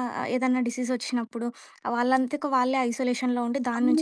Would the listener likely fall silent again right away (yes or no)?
no